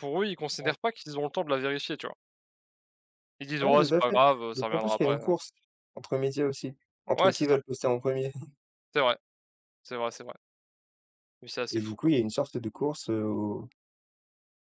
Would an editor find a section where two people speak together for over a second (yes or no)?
yes